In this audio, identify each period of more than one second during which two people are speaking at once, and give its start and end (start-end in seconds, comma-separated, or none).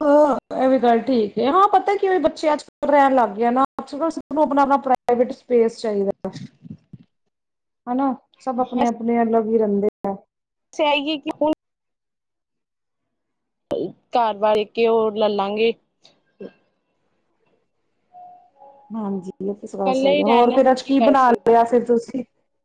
19.8-21.5